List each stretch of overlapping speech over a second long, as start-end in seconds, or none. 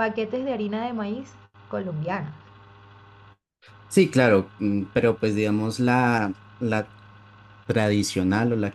none